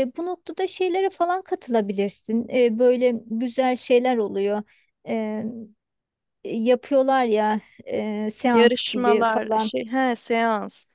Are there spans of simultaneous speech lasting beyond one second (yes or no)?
yes